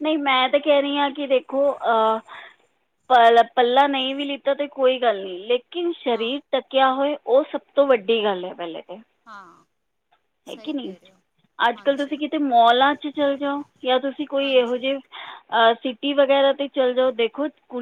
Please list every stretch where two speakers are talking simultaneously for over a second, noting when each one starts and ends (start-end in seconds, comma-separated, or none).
none